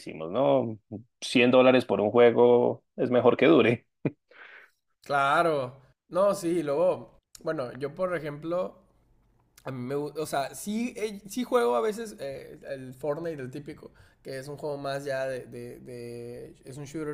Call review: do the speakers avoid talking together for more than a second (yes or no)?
yes